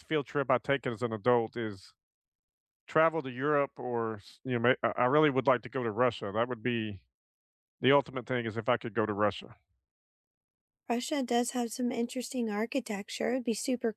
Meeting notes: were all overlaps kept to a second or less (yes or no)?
yes